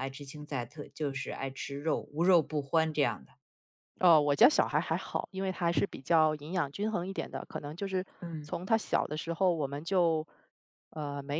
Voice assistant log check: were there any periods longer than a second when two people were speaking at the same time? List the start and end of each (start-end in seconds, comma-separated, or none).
none